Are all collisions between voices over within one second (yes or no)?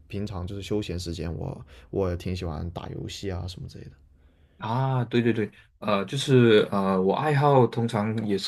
yes